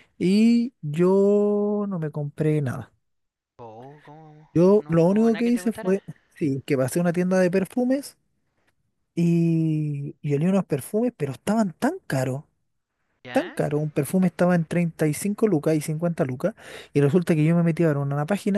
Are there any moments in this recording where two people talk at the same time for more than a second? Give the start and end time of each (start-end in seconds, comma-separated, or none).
4.5-6.0